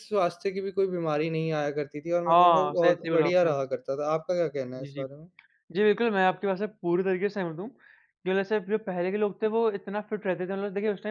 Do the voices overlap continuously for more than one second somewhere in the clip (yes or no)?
yes